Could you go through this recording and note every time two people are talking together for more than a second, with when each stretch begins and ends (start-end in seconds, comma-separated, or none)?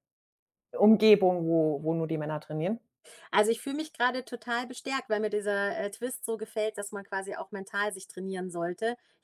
none